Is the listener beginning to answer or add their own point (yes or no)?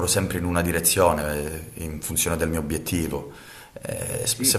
no